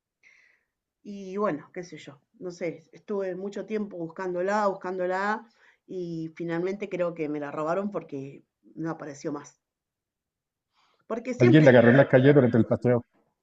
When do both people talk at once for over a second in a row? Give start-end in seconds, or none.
none